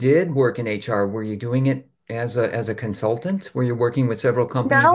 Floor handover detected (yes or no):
yes